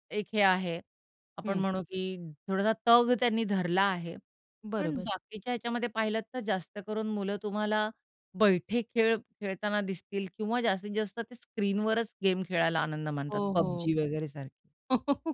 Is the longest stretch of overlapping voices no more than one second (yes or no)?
yes